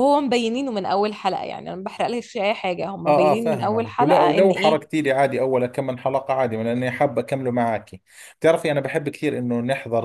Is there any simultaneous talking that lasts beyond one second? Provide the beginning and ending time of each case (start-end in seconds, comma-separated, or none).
3.0-4.8